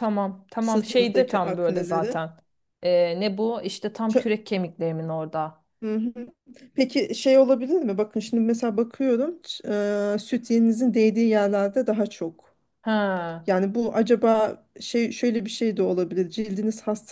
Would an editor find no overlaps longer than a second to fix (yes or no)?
no